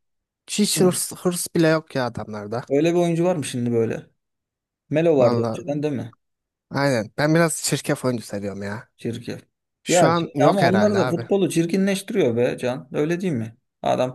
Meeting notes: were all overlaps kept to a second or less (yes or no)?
no